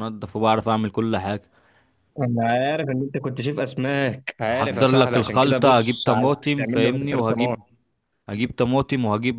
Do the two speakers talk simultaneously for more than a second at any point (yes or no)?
yes